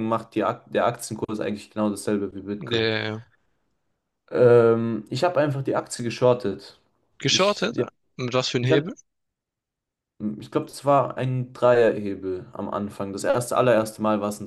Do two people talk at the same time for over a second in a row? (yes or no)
no